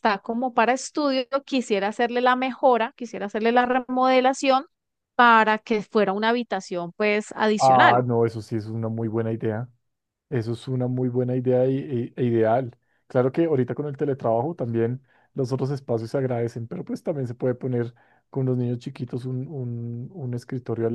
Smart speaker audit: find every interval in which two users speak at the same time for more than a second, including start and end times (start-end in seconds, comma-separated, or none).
none